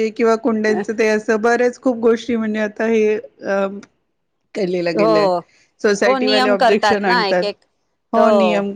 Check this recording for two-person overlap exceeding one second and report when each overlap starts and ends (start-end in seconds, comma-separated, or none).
6.0-7.4